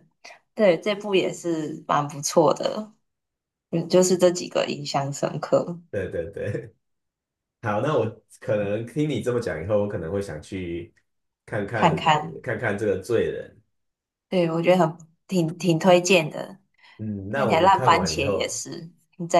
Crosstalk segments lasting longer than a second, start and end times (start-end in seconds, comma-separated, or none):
17.3-18.6